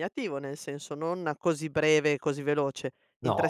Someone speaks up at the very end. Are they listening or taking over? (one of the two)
listening